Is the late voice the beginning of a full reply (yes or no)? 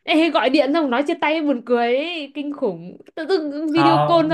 no